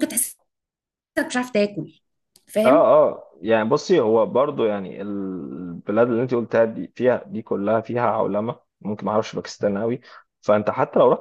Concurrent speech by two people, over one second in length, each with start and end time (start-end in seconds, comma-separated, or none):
none